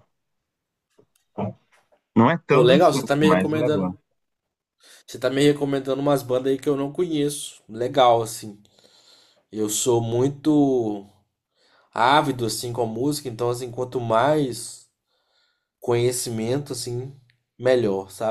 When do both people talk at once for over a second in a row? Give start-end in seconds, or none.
2.5-3.9